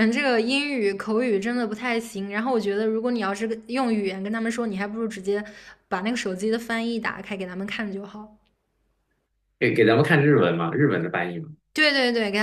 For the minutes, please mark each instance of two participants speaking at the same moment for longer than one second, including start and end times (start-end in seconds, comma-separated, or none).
none